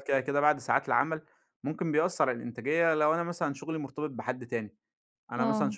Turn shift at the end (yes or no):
no